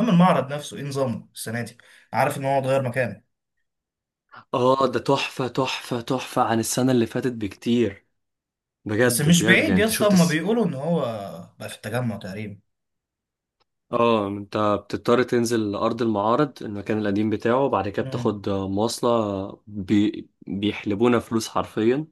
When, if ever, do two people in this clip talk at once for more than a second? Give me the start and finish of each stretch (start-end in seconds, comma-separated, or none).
9.1-10.4